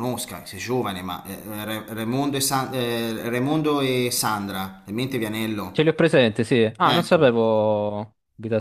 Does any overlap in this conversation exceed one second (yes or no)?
no